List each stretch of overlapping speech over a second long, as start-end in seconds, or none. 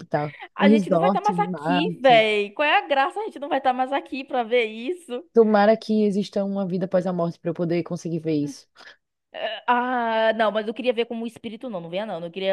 0.6-2.2